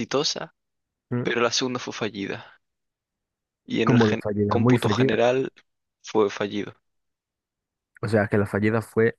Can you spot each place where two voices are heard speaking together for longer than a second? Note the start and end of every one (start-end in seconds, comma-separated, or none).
3.8-5.2